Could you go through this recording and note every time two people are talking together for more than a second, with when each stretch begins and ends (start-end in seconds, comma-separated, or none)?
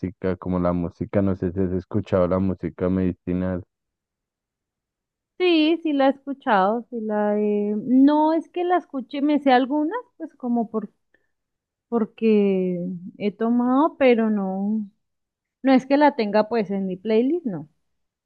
none